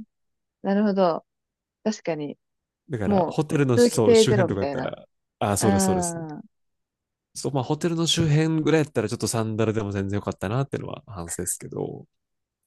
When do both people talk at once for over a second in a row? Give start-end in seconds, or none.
3.0-4.9